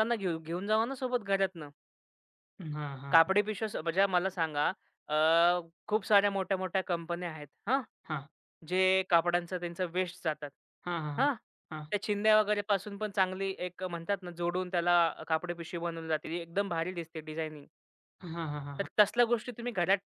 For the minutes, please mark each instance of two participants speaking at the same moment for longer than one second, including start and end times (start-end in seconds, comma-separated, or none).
none